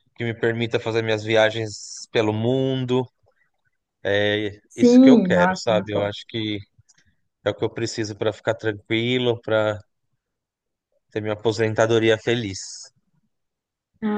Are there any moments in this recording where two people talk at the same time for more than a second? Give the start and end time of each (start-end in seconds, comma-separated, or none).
4.7-6.1